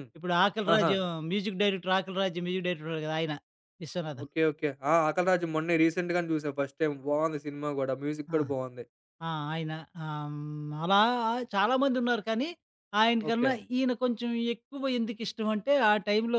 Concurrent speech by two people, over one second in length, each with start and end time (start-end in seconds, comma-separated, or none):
none